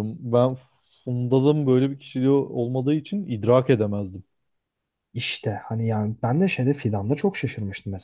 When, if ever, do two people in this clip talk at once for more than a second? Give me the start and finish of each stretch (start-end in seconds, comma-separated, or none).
none